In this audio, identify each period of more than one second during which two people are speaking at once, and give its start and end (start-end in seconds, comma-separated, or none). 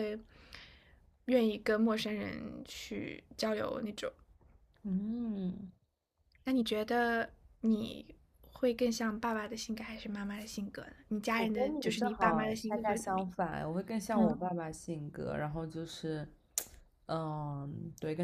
11.3-13.3